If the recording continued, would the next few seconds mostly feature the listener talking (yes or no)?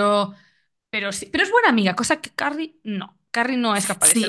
yes